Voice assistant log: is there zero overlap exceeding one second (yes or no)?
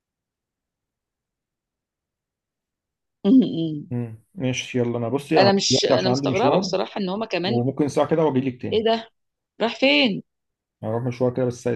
no